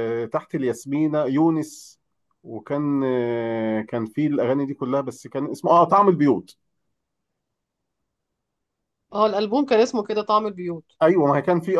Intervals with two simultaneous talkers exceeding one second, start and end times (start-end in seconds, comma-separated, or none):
none